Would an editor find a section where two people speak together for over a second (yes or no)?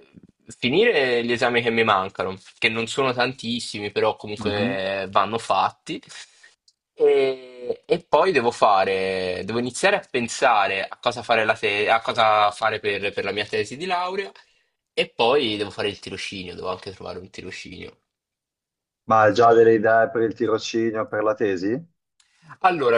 no